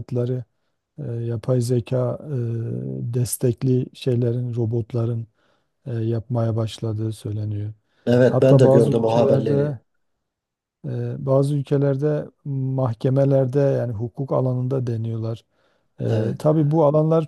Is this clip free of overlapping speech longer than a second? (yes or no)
no